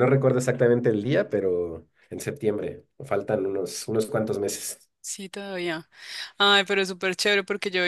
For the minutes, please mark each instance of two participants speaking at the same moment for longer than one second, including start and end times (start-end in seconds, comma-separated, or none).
none